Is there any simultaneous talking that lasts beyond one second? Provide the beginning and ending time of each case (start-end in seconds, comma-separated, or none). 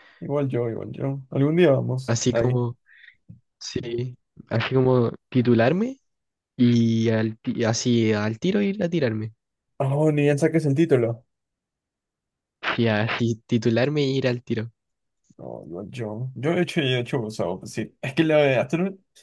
none